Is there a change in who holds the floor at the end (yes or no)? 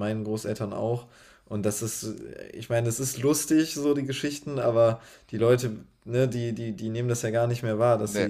no